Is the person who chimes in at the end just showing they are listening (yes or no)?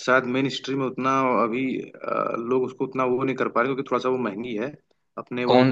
yes